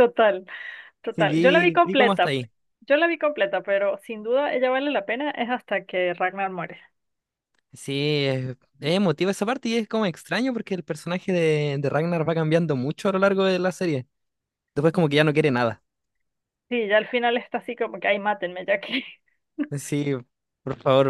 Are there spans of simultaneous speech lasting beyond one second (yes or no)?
yes